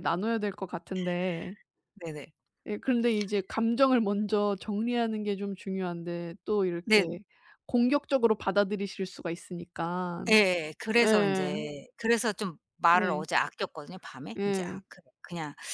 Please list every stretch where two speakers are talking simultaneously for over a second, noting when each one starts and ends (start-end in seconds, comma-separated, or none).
none